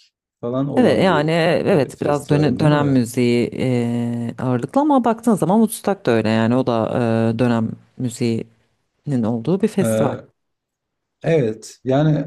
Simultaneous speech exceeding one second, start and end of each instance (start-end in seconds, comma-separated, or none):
0.8-3.0